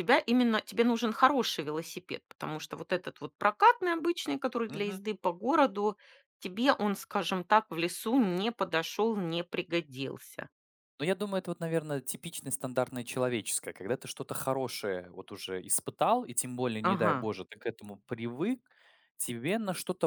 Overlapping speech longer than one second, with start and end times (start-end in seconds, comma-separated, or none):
none